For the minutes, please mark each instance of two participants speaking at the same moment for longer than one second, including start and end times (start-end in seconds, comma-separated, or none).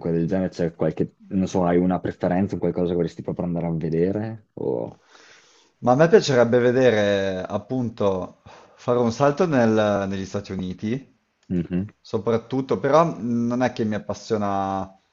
none